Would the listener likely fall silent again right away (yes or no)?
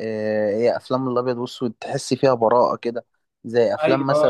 yes